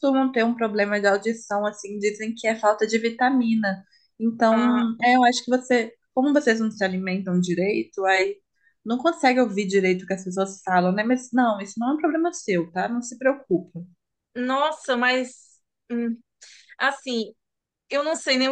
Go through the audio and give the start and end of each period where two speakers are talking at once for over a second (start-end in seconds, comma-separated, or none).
none